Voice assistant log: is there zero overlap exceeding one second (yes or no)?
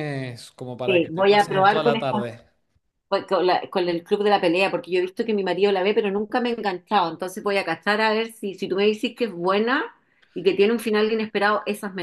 no